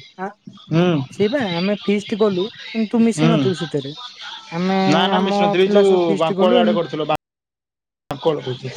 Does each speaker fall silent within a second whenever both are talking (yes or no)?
no